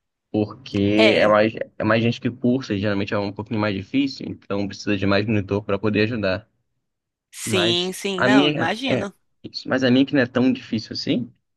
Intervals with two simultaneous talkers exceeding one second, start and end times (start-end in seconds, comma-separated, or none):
7.4-9.0